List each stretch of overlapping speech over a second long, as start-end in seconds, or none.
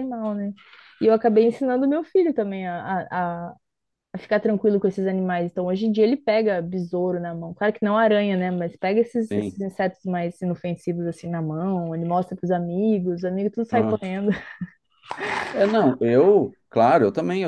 none